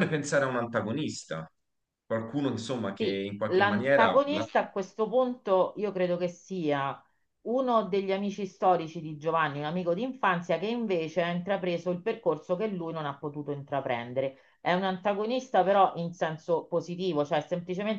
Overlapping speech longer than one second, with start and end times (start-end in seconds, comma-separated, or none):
3.0-4.5